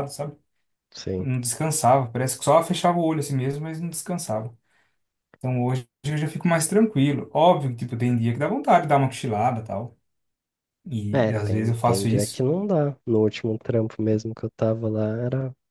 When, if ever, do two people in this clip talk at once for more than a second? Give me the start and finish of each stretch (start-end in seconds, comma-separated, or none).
11.1-12.4